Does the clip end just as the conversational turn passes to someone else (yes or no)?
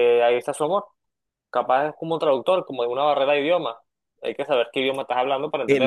yes